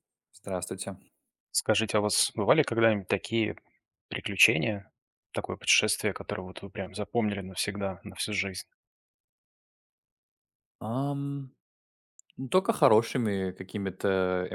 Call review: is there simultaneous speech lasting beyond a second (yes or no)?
no